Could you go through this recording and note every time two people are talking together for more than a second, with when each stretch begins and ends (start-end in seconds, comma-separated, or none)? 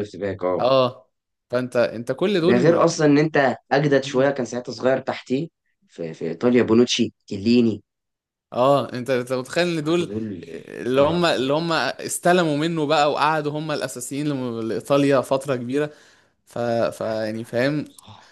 none